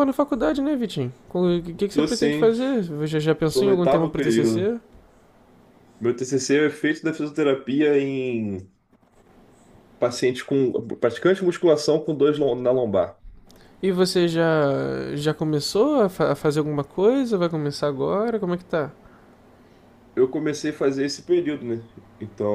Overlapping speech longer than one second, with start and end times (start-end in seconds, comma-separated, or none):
3.5-4.7